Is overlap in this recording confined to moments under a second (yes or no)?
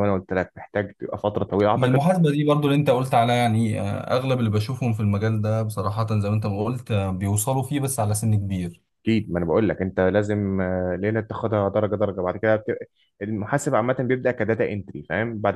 yes